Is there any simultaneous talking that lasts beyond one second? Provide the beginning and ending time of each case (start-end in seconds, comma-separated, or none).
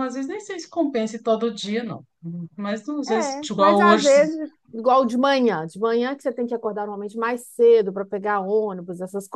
3.1-4.4